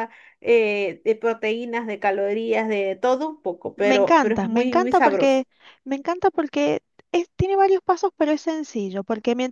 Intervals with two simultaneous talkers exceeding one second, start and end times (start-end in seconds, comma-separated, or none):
3.8-5.4